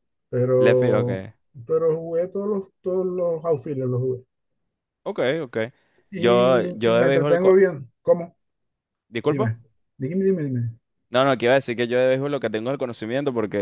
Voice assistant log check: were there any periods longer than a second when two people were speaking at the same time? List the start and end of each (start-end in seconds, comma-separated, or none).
6.1-7.5